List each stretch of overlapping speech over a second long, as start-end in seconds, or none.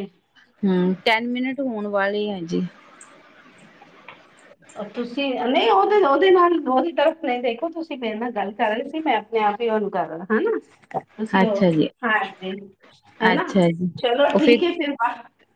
none